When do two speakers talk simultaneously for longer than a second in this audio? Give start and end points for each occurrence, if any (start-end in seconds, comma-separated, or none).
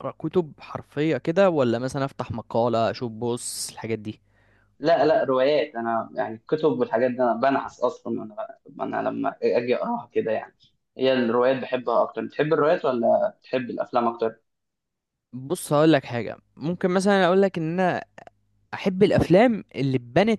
none